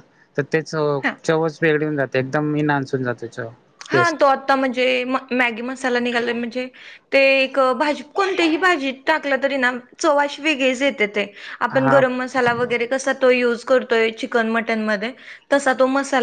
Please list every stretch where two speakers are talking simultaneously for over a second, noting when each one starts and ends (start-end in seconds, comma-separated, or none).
none